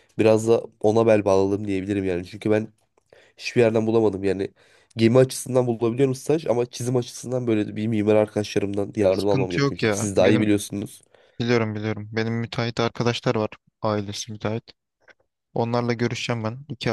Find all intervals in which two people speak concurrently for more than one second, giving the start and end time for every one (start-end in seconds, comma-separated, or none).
9.1-10.5